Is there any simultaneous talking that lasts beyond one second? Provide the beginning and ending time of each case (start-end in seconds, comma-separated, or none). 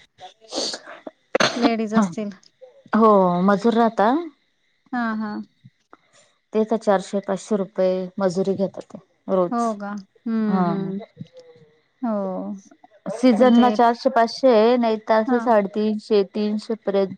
none